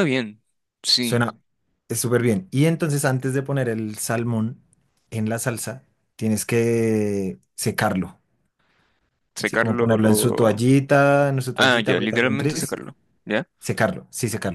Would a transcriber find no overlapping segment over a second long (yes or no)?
no